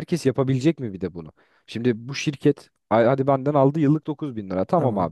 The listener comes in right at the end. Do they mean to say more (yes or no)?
no